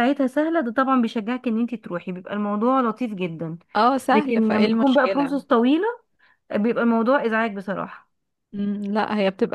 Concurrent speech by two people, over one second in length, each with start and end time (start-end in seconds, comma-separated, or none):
4.1-5.3